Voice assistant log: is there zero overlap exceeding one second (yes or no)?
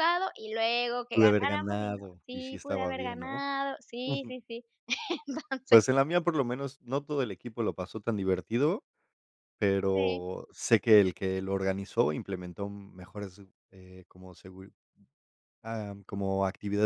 no